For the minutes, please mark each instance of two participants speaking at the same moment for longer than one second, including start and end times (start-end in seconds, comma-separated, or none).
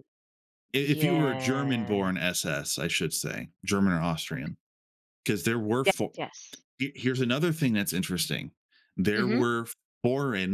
0.8-2.1